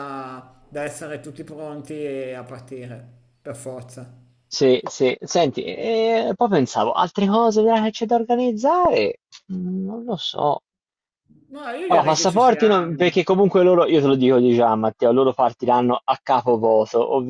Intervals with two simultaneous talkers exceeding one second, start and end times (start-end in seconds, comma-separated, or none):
11.9-13.2